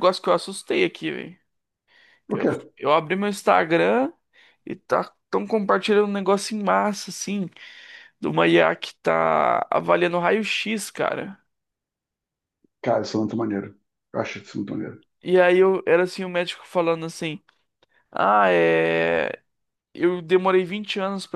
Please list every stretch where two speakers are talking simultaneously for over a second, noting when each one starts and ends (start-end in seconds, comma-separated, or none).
none